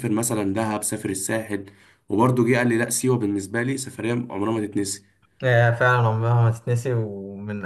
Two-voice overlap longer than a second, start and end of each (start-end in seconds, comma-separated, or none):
none